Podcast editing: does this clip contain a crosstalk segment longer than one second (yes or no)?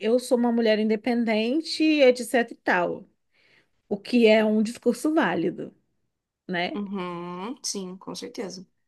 no